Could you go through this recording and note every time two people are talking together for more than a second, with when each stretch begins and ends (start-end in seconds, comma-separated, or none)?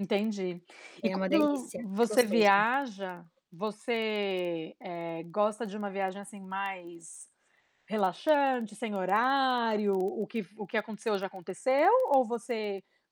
1.0-2.6